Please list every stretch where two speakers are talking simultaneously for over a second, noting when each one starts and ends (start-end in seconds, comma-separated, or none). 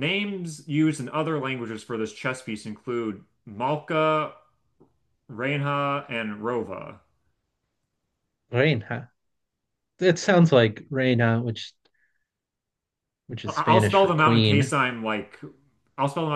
13.5-14.7